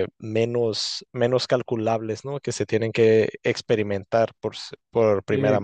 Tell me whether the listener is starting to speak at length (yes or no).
yes